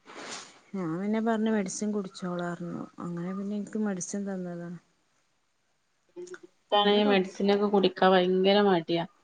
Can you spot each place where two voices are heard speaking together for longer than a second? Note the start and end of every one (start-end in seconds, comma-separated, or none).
none